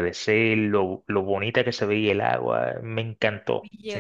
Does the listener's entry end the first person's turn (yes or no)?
yes